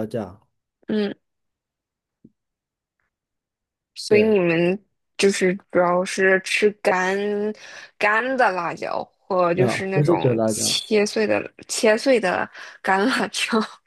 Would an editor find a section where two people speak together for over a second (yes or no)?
yes